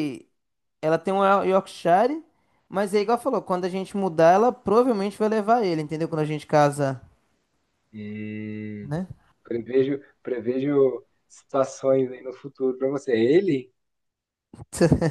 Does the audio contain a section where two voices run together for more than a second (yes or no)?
no